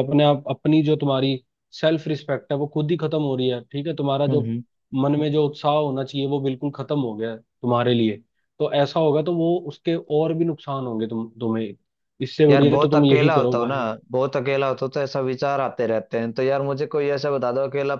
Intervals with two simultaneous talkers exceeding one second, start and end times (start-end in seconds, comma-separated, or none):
12.5-13.8